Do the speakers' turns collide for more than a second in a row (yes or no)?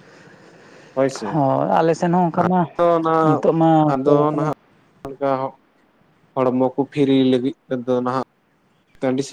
no